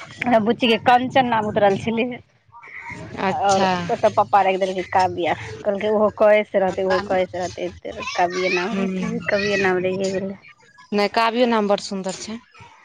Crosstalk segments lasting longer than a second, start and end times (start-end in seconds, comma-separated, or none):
none